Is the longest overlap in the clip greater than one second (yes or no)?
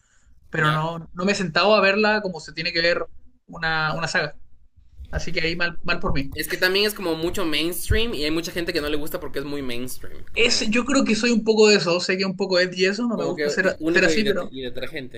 yes